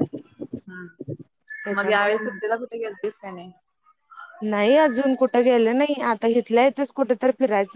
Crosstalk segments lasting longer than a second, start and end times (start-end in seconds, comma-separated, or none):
none